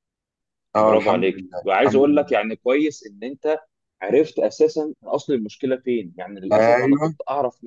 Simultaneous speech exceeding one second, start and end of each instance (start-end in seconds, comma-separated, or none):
0.8-2.4